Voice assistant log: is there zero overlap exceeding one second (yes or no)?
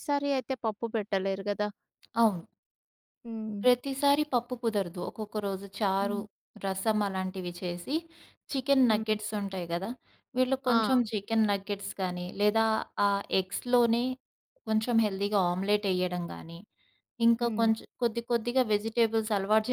yes